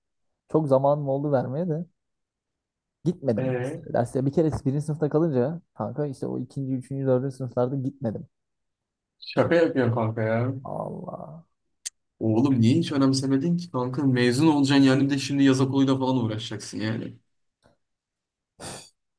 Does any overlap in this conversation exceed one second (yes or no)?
no